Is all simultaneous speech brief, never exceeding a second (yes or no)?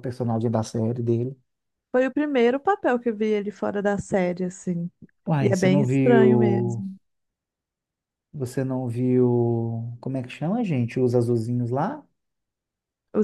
no